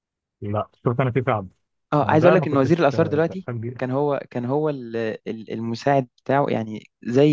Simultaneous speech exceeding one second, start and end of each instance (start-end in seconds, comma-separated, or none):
2.0-3.9